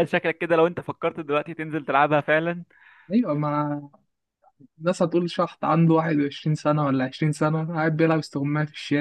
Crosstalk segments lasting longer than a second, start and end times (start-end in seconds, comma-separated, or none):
none